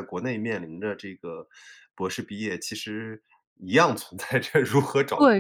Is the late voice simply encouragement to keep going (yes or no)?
no